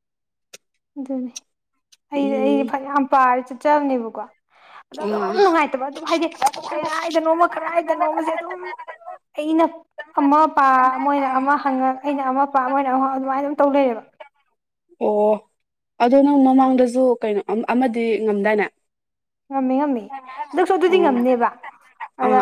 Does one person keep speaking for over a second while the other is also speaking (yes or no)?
no